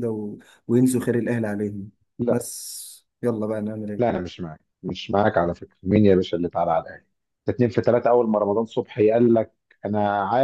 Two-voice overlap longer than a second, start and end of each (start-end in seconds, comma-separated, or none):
none